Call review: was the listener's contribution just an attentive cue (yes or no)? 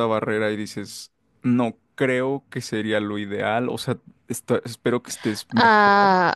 no